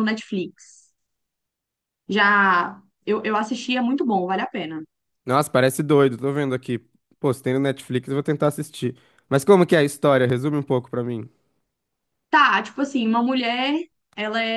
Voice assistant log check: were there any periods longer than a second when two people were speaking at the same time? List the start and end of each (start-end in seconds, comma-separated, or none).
none